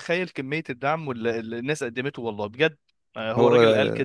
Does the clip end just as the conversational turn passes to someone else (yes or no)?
no